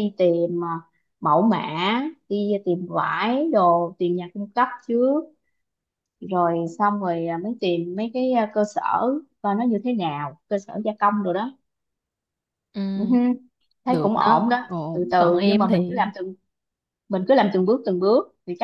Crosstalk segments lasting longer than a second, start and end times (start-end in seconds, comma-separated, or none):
13.9-16.1